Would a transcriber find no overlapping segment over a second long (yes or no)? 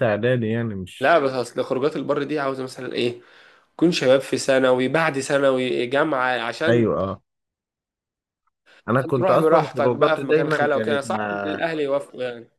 no